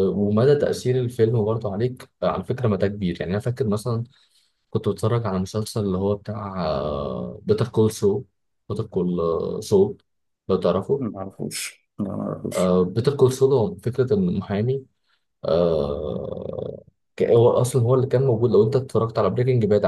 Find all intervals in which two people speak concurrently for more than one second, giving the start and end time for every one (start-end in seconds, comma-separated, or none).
none